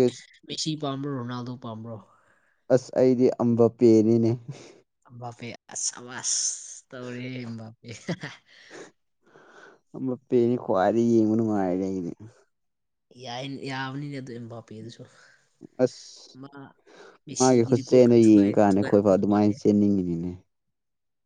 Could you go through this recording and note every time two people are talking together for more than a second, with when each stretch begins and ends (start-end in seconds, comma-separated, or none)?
17.4-19.5